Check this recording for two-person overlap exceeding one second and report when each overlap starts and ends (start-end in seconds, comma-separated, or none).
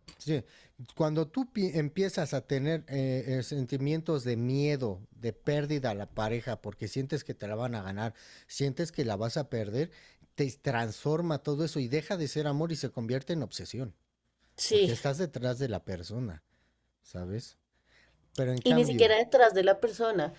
none